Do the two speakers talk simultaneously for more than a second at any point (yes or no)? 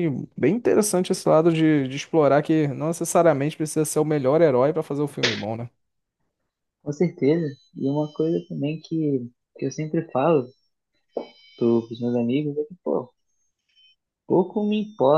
no